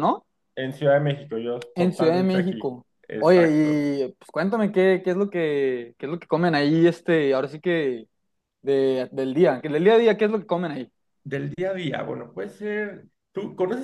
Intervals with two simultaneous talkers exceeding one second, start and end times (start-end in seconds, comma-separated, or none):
1.8-3.9